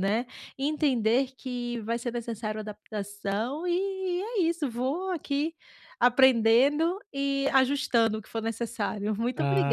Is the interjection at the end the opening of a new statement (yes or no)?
yes